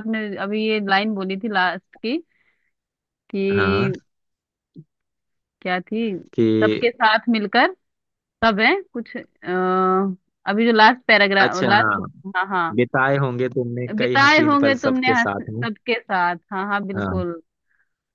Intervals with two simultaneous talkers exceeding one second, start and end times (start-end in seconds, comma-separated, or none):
14.0-15.6